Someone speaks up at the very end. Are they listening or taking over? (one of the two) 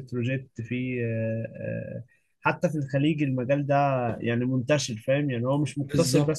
taking over